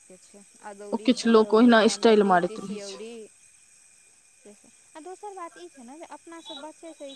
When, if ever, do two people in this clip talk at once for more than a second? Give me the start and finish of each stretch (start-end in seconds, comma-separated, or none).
0.9-3.0